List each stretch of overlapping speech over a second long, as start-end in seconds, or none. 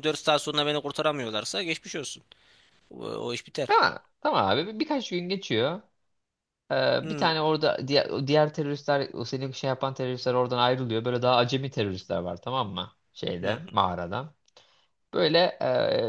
none